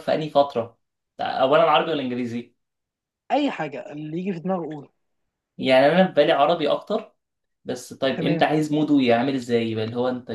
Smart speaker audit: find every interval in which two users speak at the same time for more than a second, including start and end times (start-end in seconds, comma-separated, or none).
none